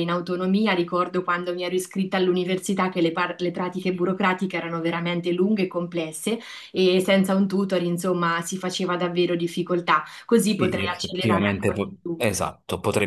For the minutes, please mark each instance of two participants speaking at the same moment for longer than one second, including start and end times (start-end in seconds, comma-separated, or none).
10.5-12.2